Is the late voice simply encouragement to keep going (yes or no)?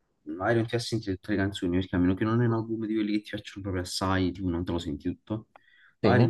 yes